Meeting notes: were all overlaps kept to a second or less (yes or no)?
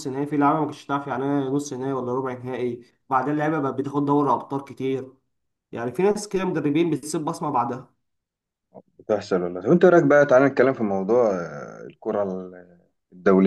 yes